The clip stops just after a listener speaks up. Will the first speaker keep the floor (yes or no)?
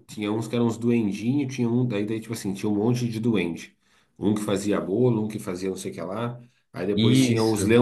yes